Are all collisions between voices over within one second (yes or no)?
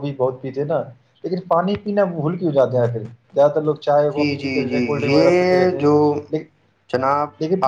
no